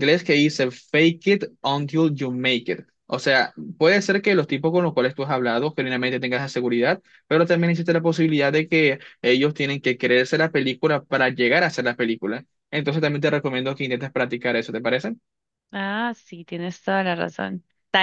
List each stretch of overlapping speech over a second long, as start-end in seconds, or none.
none